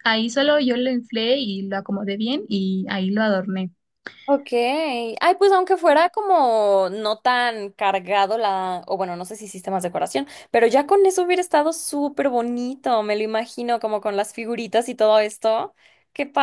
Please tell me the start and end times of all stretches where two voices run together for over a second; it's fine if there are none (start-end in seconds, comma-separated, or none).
none